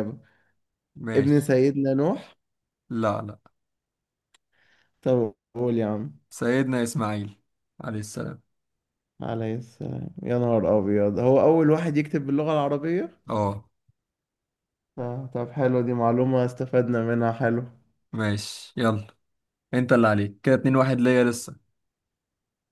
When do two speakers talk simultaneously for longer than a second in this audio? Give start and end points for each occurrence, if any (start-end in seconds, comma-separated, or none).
none